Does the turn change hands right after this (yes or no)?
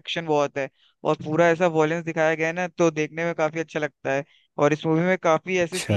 no